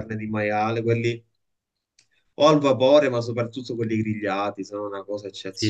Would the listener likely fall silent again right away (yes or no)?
no